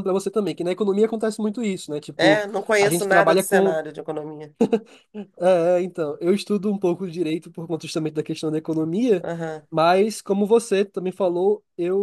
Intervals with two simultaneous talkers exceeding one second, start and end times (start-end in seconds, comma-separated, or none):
2.1-3.8